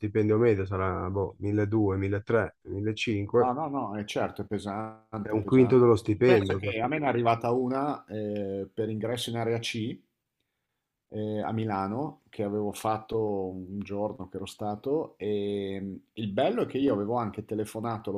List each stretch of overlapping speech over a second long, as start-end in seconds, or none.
5.2-6.8